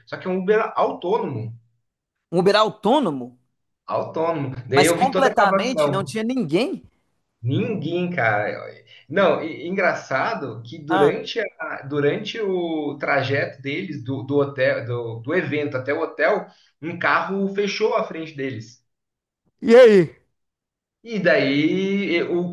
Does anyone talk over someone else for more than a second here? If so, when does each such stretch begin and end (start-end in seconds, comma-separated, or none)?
4.7-6.2